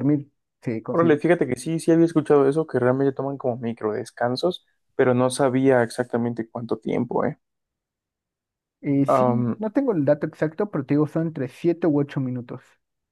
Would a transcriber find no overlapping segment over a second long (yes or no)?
yes